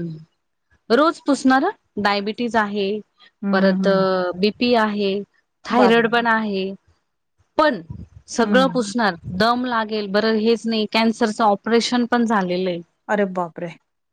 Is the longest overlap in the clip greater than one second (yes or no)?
no